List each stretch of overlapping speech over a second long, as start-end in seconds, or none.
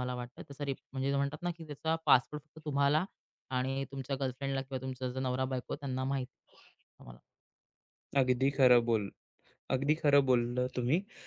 none